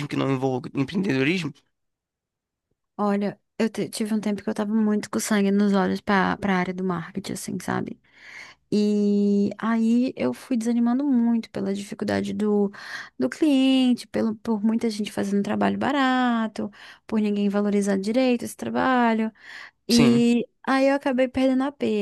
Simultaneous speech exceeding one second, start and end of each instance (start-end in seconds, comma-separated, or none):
none